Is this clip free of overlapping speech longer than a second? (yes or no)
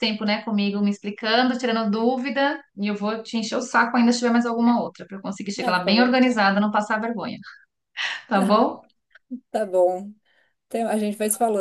yes